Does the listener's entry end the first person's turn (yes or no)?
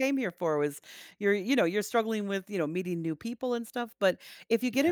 no